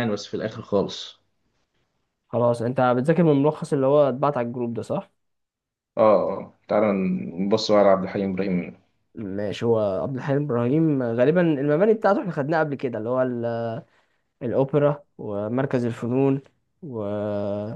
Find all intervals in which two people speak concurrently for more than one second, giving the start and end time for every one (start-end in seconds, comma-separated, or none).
none